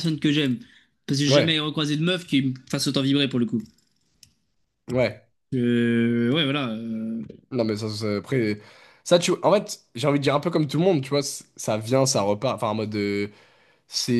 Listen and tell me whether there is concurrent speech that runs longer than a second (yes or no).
no